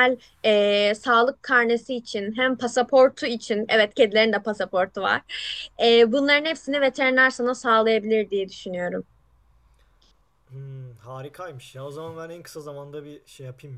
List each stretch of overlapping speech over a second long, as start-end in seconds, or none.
none